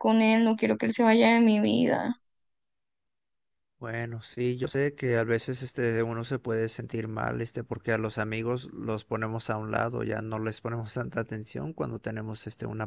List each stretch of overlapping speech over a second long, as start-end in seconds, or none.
none